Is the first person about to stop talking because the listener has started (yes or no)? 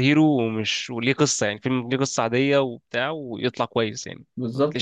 yes